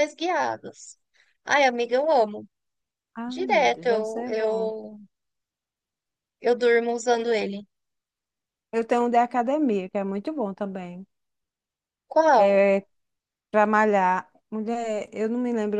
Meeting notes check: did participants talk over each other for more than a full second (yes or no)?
yes